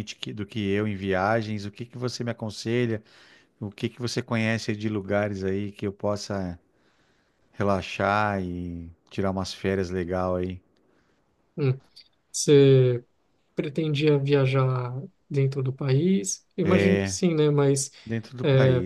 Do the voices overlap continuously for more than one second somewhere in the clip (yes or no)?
no